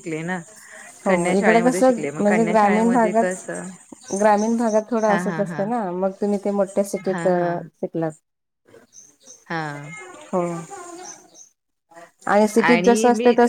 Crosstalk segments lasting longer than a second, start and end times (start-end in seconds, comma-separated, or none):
1.1-3.4